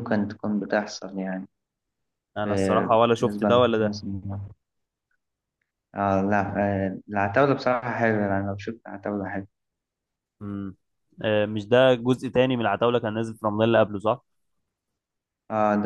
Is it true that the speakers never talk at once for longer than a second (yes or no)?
no